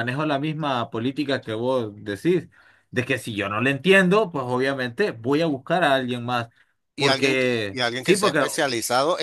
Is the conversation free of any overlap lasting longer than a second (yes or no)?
no